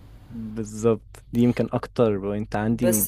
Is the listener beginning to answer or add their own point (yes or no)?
yes